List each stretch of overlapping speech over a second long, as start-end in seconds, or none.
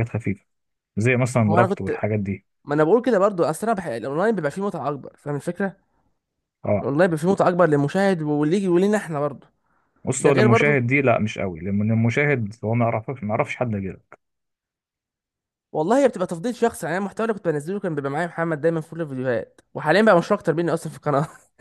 none